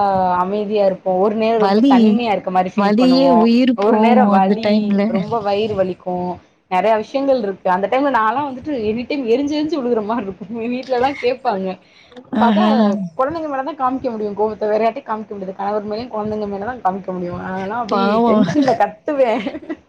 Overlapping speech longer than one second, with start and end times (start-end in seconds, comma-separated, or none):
2.8-4.7